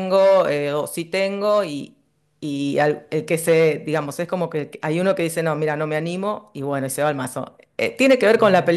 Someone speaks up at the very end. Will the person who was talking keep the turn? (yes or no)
yes